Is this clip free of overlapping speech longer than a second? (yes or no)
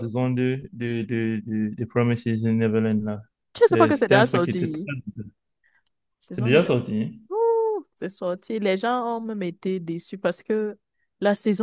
no